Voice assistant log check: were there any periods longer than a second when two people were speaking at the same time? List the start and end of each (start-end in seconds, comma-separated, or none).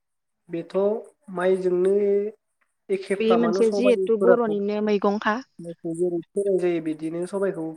3.2-5.3